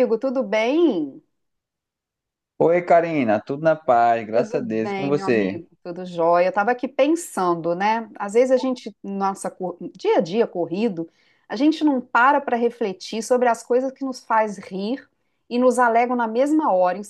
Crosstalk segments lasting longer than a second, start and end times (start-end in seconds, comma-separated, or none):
4.3-5.6